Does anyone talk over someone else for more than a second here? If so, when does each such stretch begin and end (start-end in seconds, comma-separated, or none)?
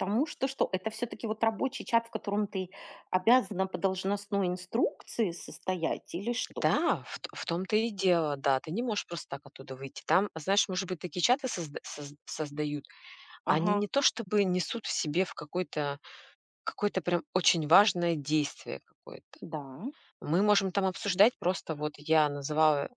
none